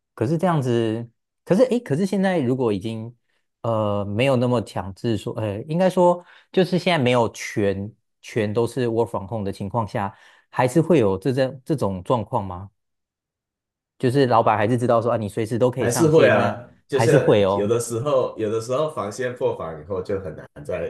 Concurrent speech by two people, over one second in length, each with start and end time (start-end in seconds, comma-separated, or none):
15.8-17.7